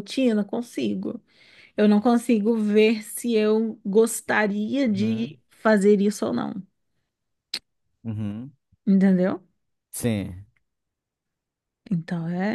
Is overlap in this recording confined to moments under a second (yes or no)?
yes